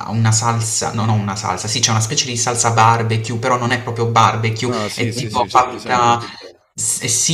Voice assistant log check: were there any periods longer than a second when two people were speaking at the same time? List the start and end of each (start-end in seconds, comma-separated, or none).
4.6-6.2